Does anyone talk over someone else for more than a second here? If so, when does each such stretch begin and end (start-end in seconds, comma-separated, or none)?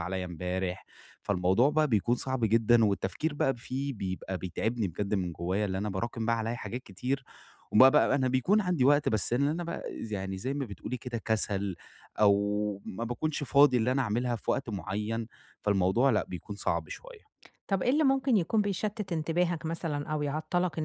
none